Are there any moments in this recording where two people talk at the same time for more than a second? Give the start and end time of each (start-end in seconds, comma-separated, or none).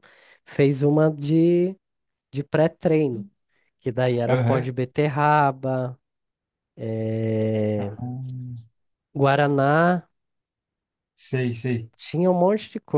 none